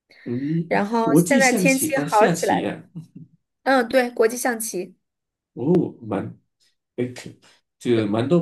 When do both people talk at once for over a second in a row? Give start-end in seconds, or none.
0.7-2.8